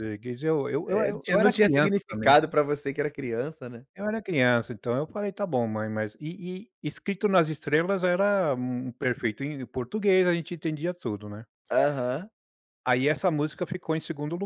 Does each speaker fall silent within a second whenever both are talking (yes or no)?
no